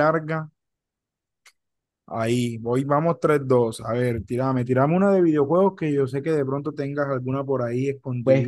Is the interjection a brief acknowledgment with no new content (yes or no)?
no